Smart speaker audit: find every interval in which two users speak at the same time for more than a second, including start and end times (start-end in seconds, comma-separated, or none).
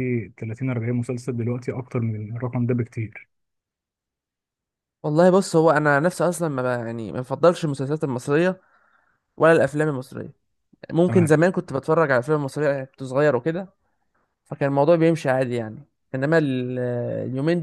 none